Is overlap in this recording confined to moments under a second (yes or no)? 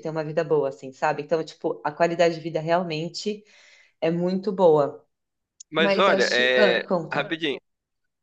no